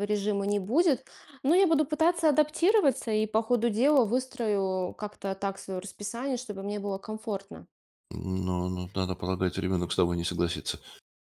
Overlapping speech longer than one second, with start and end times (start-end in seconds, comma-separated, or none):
none